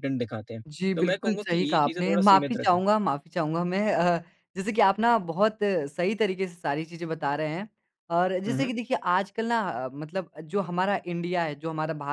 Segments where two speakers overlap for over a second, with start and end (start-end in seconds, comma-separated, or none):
0.7-2.8